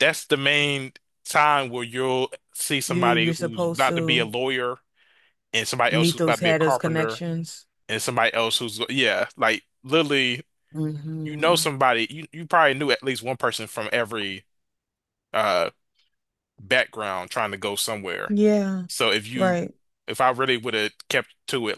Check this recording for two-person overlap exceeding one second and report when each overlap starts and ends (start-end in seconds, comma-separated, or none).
2.9-4.3, 5.9-7.2